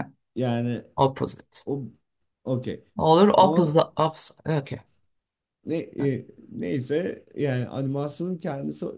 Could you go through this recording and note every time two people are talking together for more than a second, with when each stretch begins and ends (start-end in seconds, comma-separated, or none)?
none